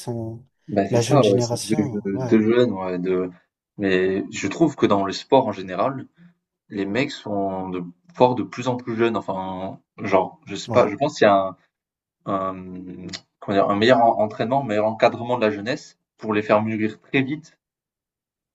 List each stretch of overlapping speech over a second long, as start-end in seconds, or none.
0.9-2.4